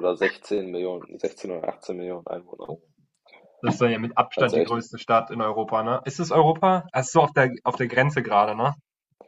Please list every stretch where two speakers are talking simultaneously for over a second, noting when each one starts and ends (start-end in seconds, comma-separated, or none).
none